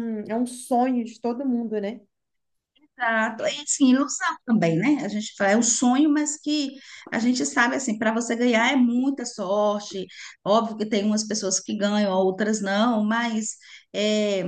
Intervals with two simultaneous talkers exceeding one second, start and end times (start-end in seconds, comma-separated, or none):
none